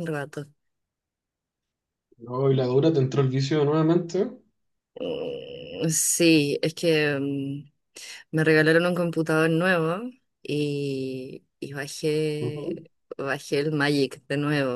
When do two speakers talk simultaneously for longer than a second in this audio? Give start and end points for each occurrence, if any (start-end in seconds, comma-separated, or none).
none